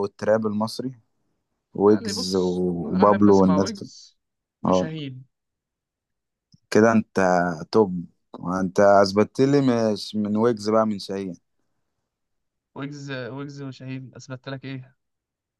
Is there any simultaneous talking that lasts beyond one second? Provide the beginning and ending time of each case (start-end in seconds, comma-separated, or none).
1.9-3.9